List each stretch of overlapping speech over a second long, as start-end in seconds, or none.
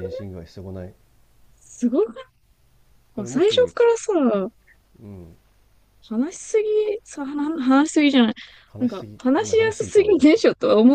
8.8-10.4